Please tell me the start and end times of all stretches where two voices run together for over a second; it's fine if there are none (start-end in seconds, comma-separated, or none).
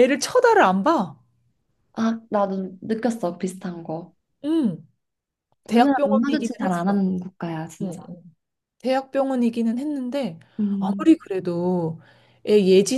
5.7-7.0